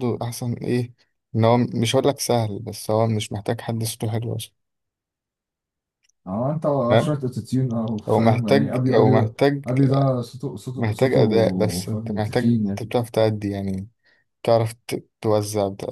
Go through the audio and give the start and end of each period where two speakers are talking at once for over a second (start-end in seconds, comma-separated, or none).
8.1-9.6, 10.8-12.9